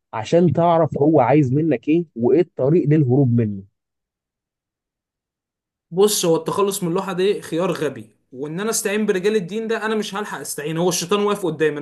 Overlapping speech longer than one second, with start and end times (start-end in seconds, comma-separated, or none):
none